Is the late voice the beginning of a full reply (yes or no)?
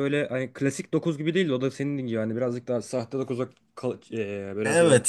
yes